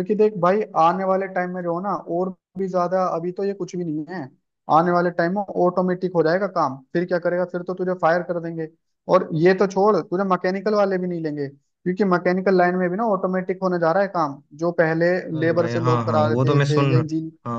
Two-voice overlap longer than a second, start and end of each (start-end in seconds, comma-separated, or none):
15.3-17.0